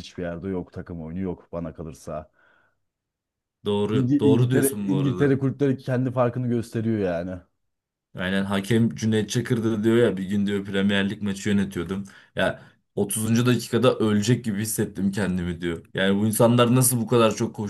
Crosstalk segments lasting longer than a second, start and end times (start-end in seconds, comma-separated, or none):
3.9-5.4